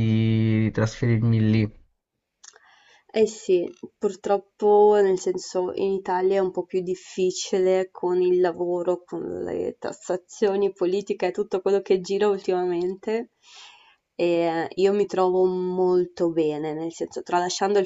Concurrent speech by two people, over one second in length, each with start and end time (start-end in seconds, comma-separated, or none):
none